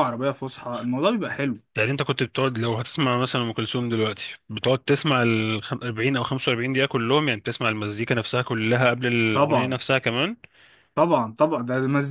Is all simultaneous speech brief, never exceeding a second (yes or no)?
yes